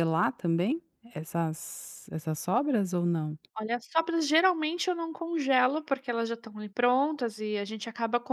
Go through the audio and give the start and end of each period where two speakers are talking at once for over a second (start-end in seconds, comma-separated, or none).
none